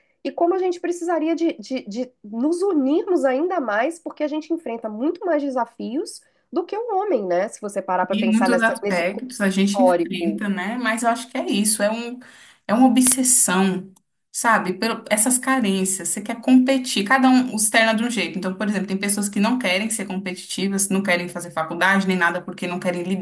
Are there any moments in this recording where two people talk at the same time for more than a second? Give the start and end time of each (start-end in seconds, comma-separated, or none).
8.1-10.4